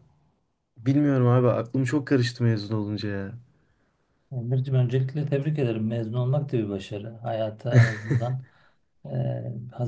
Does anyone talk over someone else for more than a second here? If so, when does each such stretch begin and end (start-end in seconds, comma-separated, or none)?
none